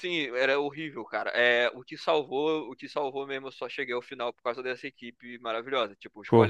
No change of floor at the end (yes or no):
yes